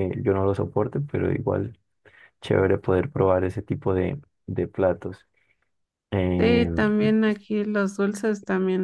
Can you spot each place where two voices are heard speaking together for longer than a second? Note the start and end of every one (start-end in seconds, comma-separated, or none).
none